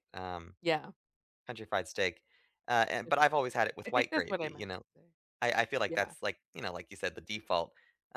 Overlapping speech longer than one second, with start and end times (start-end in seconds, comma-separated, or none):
3.0-4.8